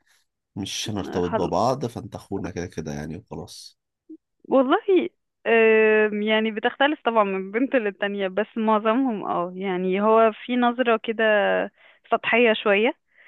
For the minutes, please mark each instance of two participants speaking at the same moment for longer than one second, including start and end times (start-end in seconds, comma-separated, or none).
none